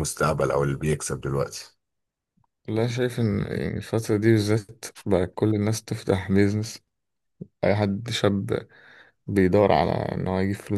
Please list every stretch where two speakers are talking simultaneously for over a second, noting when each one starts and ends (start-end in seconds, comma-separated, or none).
none